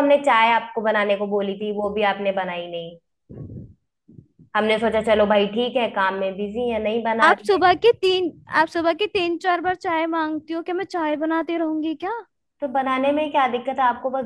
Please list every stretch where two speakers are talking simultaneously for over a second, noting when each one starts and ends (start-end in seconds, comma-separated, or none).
none